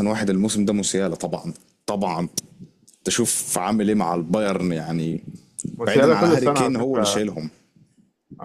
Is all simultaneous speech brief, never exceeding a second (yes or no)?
no